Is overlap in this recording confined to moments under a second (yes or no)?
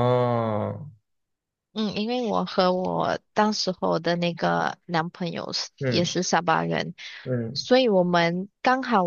yes